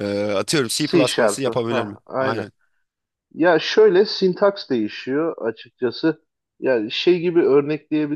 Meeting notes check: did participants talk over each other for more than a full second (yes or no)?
yes